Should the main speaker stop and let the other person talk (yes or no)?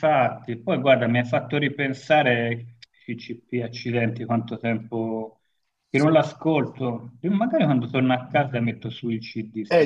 yes